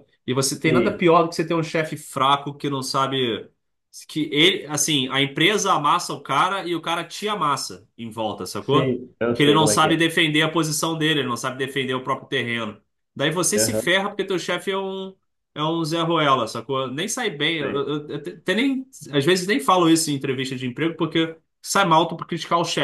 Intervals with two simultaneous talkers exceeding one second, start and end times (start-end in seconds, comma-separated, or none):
8.6-10.0